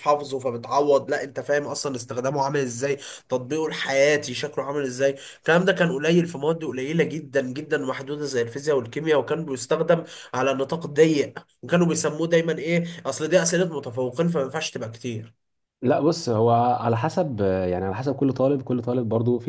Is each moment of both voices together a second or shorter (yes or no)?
yes